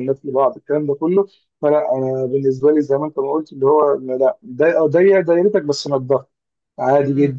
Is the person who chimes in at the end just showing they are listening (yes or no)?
yes